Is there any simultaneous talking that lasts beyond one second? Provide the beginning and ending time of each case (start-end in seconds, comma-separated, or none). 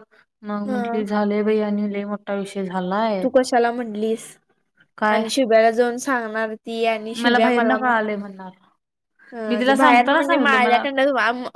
9.5-10.8